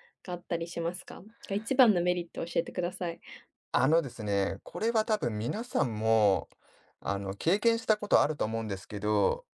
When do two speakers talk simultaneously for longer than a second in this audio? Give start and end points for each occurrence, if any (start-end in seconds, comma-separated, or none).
none